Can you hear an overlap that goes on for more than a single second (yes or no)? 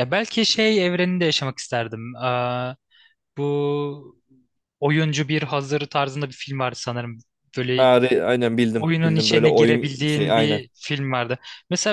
yes